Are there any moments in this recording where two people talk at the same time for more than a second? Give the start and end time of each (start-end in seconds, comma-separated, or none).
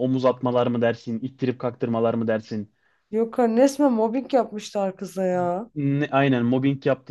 none